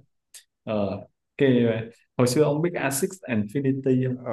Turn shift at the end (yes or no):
yes